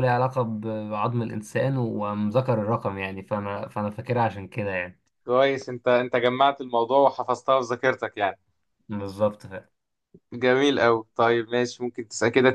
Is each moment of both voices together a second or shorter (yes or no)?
yes